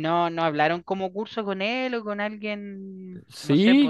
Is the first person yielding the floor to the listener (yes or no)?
yes